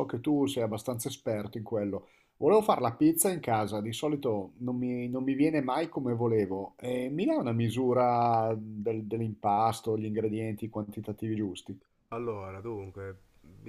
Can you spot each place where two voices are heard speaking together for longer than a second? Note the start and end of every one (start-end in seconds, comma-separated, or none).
none